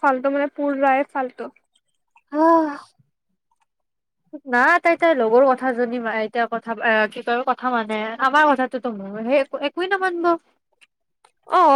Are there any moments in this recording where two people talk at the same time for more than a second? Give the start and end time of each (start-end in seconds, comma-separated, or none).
none